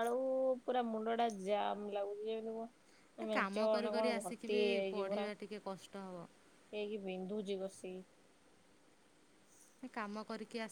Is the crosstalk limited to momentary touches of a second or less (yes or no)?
no